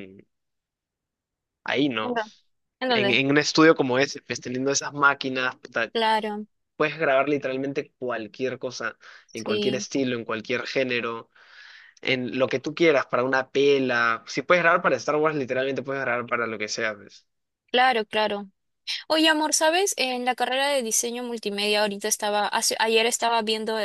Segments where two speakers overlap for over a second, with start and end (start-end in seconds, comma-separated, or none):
none